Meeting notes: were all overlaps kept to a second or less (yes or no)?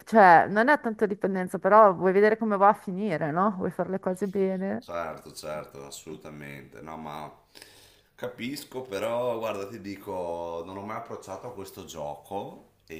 yes